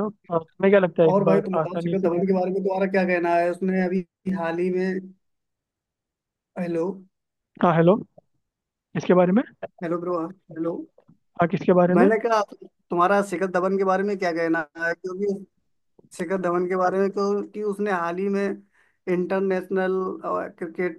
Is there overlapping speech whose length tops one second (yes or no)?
yes